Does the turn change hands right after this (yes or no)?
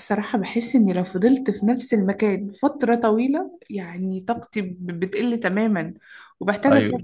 no